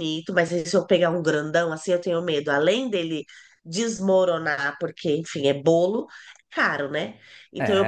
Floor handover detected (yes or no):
no